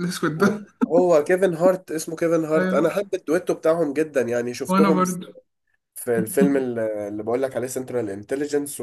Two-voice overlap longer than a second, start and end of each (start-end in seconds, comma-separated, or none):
none